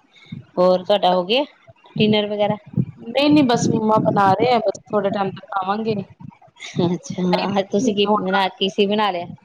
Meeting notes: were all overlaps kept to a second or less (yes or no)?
yes